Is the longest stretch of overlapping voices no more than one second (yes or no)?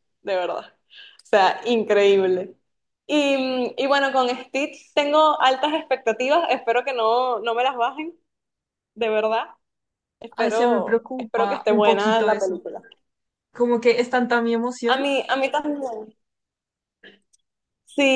no